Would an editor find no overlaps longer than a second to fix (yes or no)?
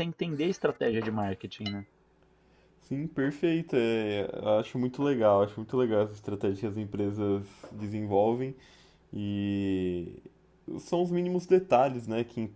yes